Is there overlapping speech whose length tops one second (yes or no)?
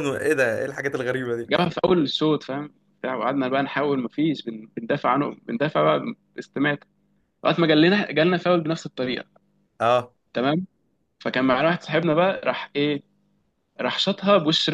no